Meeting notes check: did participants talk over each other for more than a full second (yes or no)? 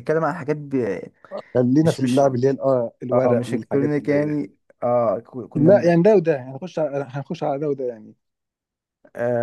yes